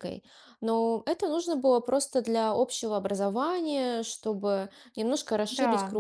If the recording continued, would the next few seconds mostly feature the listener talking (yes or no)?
no